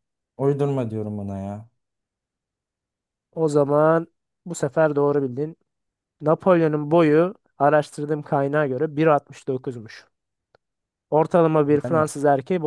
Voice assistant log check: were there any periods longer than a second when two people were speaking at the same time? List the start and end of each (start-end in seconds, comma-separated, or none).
none